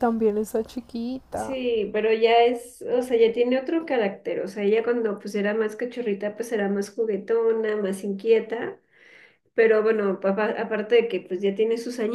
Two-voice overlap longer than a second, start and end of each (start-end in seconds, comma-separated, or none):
none